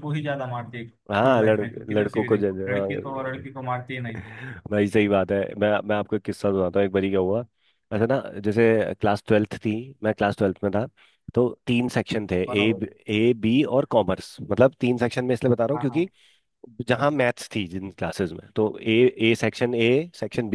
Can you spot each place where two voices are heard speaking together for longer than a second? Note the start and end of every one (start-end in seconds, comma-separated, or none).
1.1-3.5